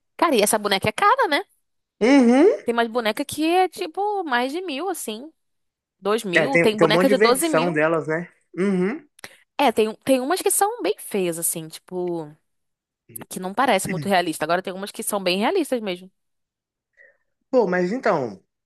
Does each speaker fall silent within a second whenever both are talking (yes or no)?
no